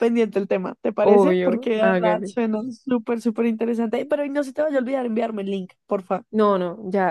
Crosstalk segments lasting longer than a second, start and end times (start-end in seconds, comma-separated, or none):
1.0-2.3